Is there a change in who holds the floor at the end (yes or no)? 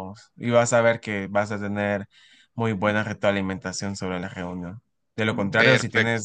no